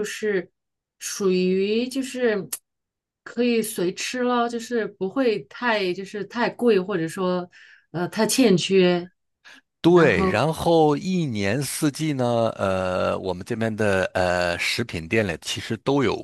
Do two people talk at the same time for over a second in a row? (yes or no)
no